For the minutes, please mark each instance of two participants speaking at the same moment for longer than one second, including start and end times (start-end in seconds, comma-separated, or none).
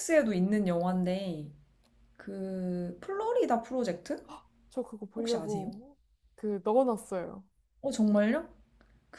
none